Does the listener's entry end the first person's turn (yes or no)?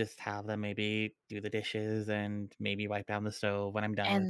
yes